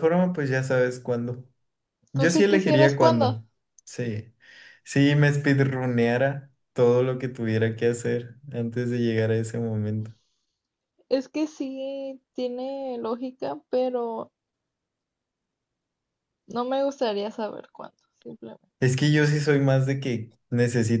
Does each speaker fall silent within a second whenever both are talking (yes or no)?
no